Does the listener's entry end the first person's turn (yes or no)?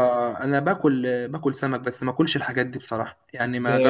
yes